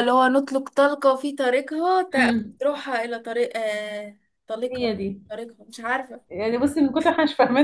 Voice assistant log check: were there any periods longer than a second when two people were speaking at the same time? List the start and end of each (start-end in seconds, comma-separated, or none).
none